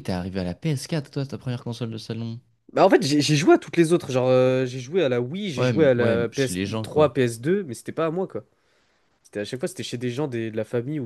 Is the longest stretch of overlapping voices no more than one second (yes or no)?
no